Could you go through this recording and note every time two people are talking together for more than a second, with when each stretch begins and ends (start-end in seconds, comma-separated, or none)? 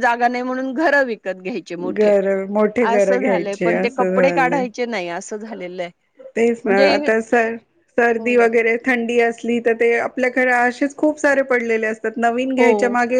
2.9-4.6